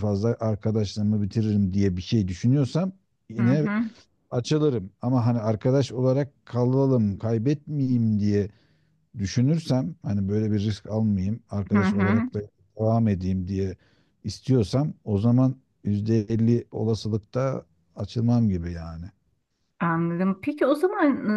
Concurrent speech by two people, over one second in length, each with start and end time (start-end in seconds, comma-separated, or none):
none